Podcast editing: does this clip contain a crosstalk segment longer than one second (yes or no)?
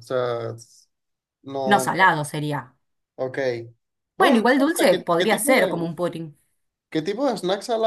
yes